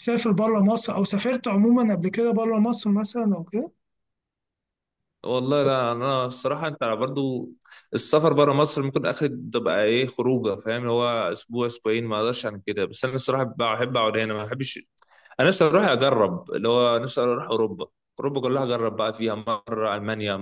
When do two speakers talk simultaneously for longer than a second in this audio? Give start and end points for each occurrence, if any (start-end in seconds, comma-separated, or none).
none